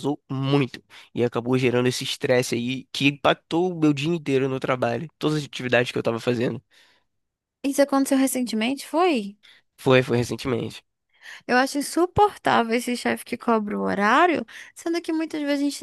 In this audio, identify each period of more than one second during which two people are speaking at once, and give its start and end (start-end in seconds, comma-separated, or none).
none